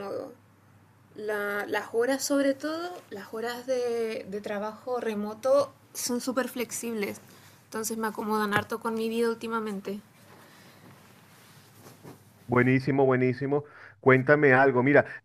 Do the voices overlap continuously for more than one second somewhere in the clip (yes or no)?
no